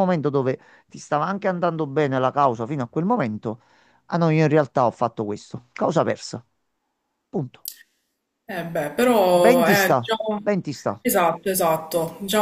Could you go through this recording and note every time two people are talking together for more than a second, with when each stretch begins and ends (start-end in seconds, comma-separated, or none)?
none